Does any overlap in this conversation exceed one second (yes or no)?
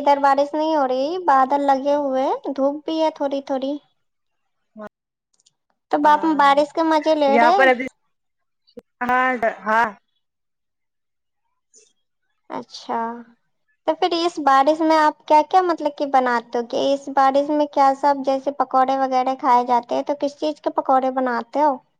no